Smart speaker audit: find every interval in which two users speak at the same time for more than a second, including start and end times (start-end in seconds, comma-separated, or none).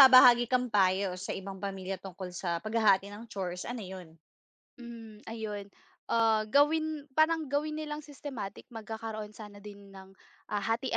none